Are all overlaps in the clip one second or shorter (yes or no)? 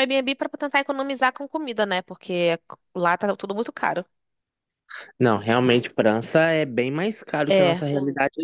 yes